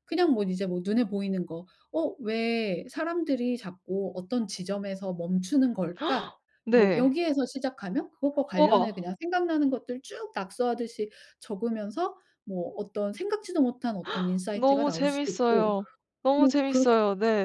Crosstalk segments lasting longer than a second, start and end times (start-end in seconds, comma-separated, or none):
14.5-15.7